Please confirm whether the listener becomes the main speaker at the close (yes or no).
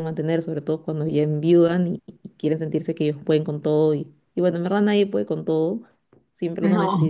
no